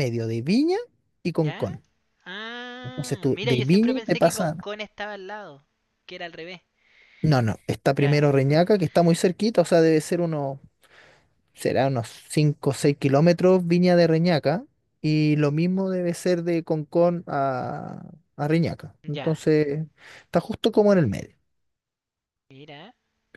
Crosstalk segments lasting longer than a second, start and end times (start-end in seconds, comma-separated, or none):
2.8-4.5